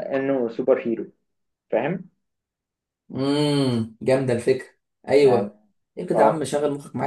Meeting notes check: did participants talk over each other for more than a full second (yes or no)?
no